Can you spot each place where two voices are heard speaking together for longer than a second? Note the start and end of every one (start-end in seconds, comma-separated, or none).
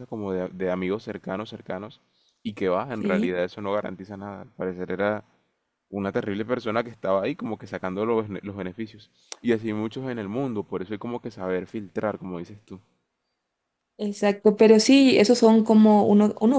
none